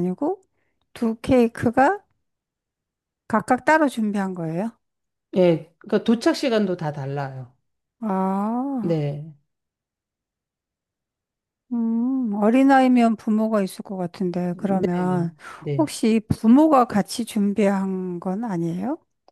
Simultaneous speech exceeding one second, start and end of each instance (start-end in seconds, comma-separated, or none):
none